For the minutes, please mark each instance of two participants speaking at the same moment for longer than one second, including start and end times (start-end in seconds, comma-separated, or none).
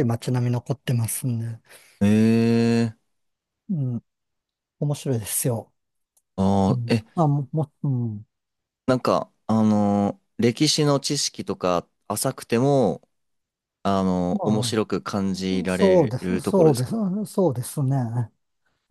15.5-17.0